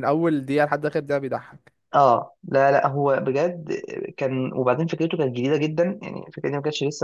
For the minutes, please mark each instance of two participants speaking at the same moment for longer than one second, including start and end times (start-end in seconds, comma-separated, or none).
none